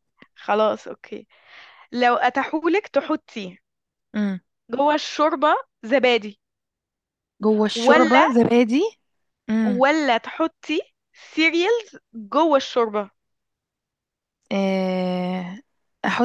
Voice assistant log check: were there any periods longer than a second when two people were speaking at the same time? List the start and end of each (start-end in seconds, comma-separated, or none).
none